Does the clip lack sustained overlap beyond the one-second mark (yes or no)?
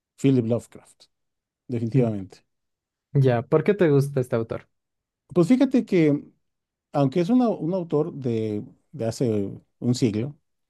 yes